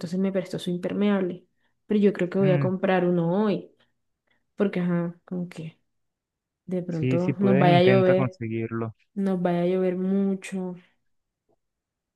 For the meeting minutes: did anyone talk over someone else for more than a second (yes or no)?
yes